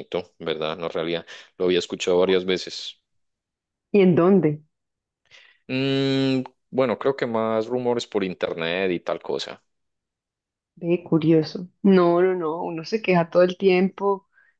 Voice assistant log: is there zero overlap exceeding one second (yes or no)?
yes